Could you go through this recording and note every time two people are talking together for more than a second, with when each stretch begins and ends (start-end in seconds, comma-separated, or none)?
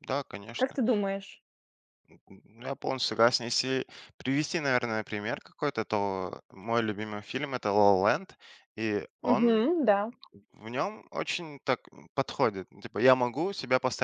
none